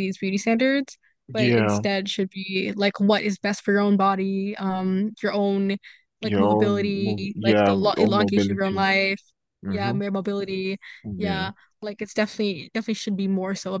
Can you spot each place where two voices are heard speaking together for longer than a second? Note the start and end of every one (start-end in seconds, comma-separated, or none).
6.3-8.8